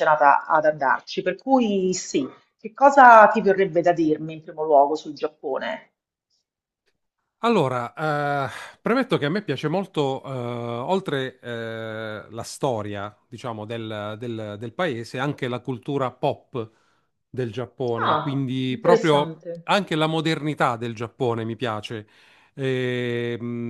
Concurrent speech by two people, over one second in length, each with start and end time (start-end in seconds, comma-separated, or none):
18.0-19.7